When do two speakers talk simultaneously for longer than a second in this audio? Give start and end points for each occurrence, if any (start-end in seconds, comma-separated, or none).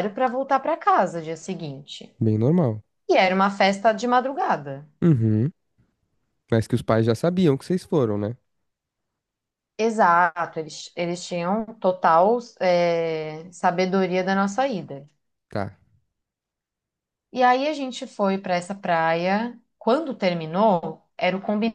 none